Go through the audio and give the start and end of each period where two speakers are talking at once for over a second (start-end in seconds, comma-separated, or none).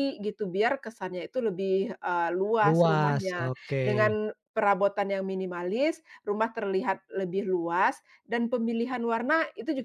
2.6-4.2